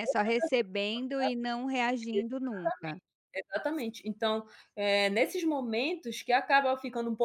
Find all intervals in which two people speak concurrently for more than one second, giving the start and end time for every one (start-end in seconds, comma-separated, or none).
none